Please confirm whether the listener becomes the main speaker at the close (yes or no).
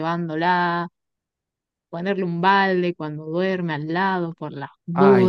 yes